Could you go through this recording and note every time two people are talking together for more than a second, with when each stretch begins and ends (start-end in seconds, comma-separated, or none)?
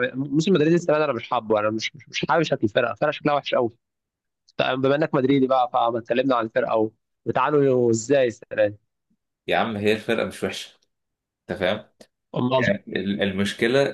none